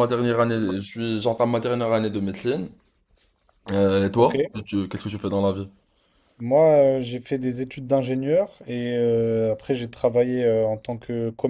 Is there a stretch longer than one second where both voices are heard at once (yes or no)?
no